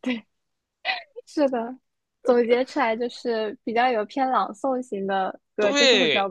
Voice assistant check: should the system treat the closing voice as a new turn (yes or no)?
yes